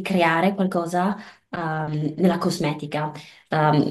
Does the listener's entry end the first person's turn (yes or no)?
no